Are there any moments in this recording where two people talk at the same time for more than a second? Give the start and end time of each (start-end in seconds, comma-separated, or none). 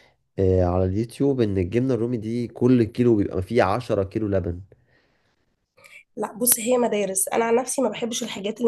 none